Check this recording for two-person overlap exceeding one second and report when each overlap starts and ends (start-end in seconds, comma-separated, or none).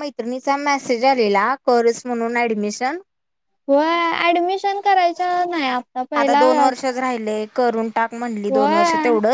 none